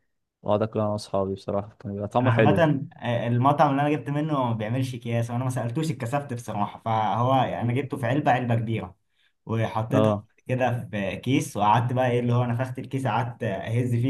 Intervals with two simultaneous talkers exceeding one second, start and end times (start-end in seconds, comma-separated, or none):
none